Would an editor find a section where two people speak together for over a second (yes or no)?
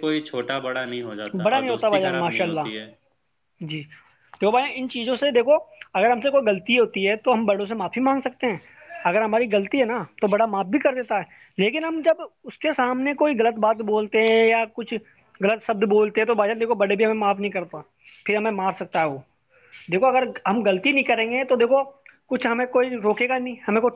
yes